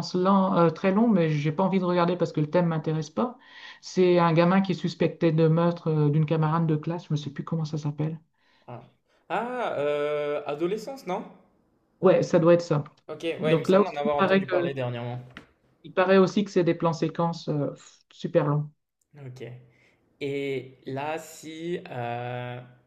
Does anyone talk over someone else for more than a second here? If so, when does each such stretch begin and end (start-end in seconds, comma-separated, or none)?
13.4-14.7